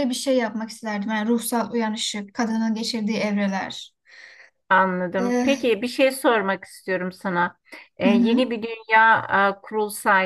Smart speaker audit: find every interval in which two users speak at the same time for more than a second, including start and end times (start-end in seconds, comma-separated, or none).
none